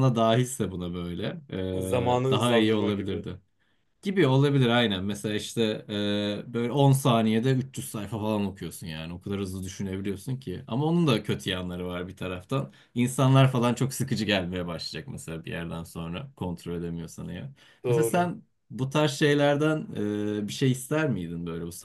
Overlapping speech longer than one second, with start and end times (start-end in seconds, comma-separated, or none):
1.9-3.3